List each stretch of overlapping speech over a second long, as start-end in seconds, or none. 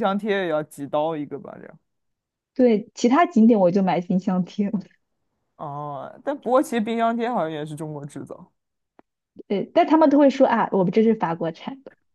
none